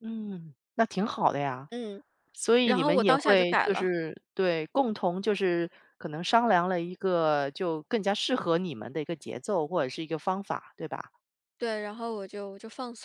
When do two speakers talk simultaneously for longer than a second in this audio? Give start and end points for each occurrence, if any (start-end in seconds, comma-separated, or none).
2.6-3.9